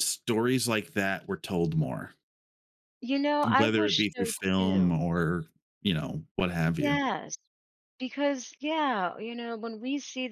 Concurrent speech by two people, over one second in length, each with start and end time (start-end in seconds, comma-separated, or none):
3.5-4.9